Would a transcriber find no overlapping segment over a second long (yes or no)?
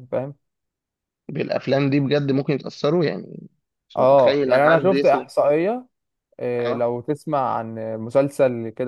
no